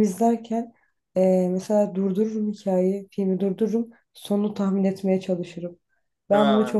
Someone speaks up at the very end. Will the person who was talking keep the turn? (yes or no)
yes